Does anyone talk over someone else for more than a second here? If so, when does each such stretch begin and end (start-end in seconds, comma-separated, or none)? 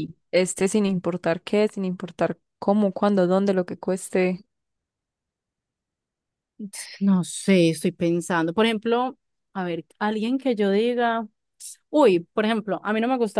none